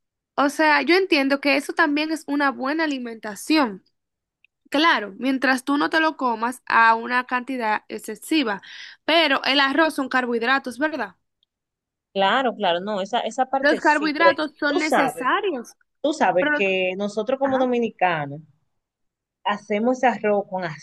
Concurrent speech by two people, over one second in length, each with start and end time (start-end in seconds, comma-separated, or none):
13.6-15.3